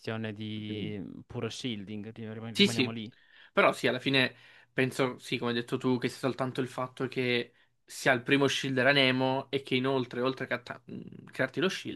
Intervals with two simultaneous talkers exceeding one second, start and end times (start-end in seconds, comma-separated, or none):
none